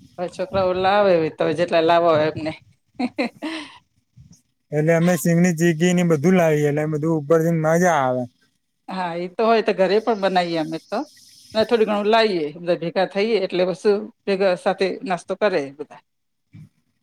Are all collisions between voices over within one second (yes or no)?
yes